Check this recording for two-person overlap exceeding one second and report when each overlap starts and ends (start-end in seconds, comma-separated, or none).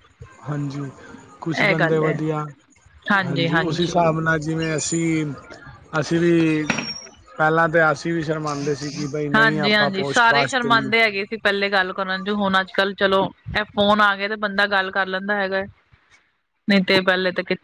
9.3-10.9